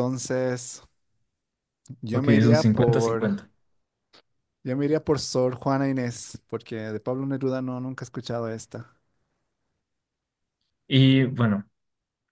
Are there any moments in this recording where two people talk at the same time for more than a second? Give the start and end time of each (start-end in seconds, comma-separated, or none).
2.1-3.3